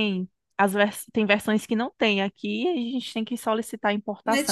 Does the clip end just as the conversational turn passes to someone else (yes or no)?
yes